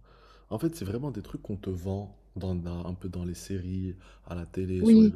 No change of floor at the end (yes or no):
yes